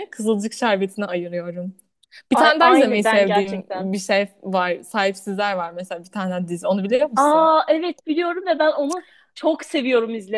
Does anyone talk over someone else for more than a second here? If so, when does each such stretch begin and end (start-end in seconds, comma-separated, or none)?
2.3-3.9